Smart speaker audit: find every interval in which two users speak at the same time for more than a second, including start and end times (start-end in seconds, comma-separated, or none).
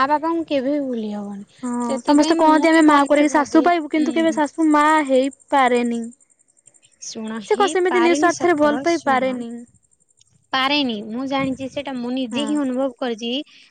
7.5-9.4